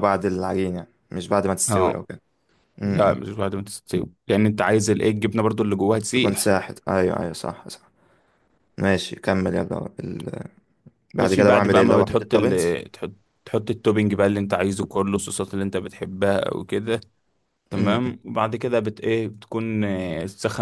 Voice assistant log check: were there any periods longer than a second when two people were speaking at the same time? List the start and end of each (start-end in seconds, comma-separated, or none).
11.2-12.8